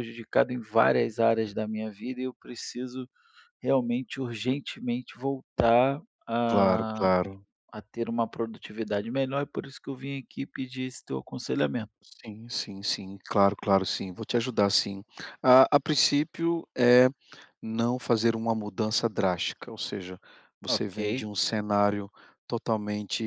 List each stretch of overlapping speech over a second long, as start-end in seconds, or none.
none